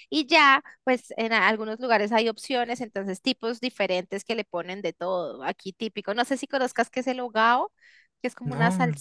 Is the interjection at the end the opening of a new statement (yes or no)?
no